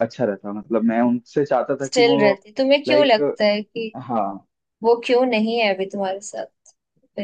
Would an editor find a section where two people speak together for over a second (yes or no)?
no